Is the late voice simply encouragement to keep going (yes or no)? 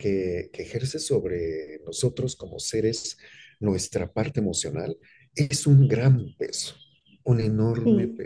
no